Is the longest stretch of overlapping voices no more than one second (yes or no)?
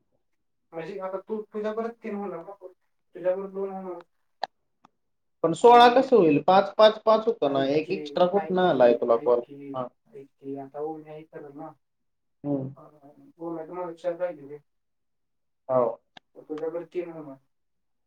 no